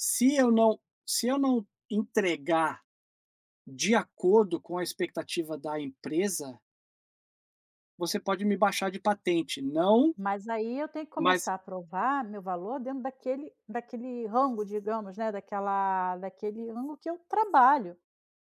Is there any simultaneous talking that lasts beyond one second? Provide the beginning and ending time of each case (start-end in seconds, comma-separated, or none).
none